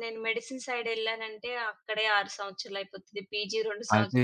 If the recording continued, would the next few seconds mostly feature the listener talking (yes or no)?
yes